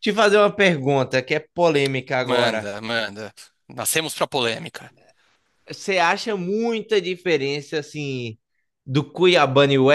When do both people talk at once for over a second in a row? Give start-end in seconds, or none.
none